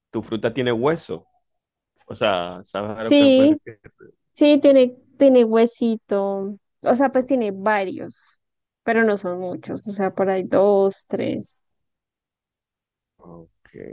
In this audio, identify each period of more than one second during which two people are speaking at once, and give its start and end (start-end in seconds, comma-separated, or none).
none